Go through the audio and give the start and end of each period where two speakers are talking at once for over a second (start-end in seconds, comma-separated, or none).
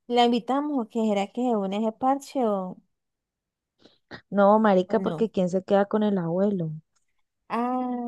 none